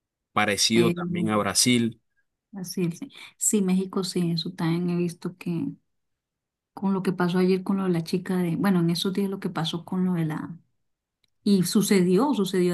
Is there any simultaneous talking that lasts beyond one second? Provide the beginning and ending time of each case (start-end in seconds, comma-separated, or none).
none